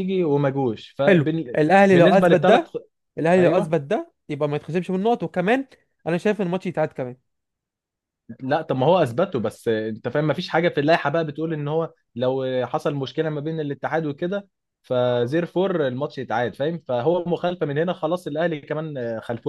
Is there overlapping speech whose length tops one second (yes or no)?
yes